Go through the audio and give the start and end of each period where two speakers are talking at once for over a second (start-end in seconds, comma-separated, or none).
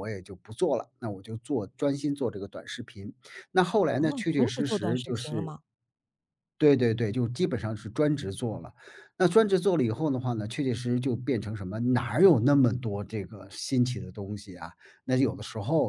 4.0-5.5